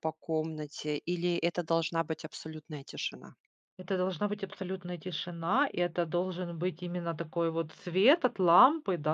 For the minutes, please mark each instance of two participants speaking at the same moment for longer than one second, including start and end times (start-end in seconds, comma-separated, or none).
none